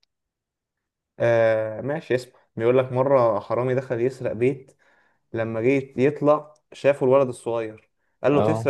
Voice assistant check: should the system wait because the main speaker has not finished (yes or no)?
yes